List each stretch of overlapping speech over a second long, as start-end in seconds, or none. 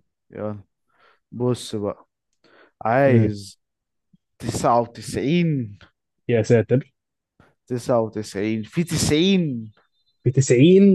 none